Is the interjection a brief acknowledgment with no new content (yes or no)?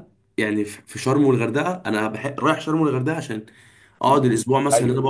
no